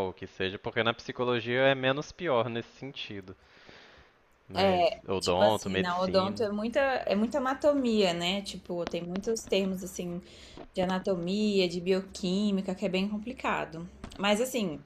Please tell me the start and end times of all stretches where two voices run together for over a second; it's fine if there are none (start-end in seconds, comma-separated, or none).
4.5-6.4